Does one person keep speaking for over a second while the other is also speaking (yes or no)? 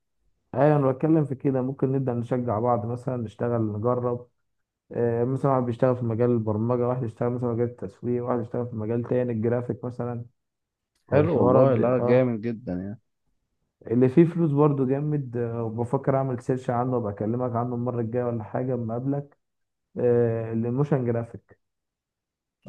yes